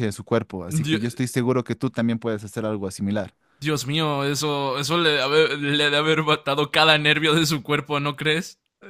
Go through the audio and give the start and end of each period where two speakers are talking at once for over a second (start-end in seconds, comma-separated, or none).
none